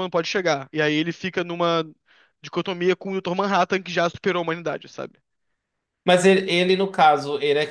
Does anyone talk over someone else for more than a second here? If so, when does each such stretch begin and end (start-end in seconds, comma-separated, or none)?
none